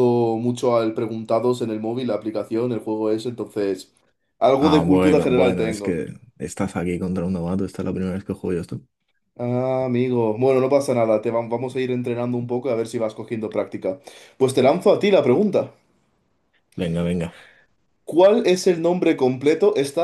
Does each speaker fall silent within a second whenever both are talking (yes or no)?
no